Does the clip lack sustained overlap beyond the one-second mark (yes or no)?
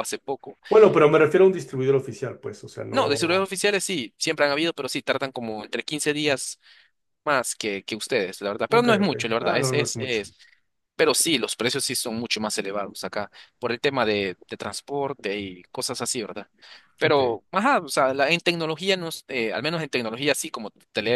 no